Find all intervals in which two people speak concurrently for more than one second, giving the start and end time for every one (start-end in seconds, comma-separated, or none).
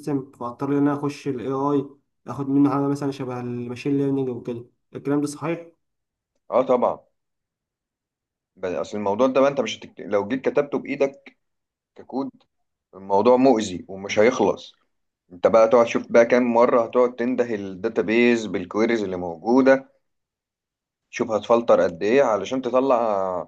none